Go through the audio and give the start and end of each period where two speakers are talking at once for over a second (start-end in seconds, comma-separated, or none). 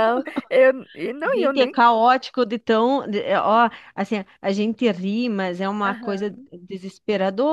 none